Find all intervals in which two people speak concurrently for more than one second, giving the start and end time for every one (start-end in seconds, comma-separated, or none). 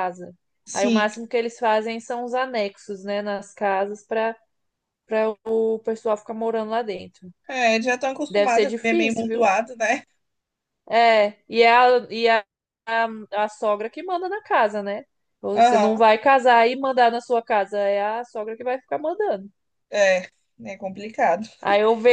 8.3-9.5